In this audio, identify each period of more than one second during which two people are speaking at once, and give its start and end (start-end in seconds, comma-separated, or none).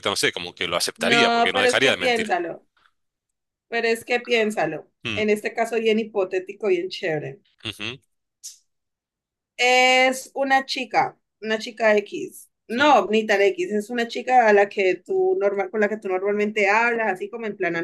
1.0-2.3